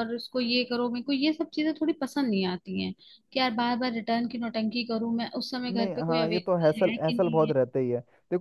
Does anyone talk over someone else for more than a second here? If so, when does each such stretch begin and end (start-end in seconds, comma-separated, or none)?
5.7-7.5